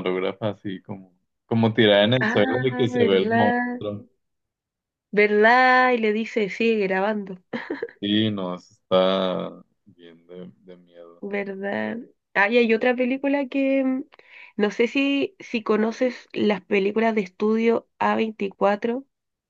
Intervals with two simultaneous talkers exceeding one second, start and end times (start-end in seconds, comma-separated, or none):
2.2-3.8